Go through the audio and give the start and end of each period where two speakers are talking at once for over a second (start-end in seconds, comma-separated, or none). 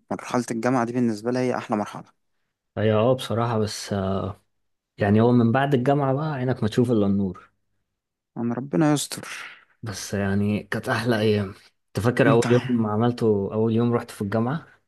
none